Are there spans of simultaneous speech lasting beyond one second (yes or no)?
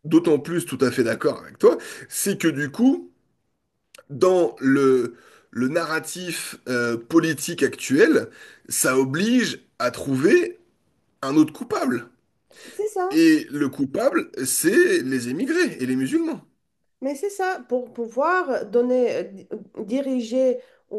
no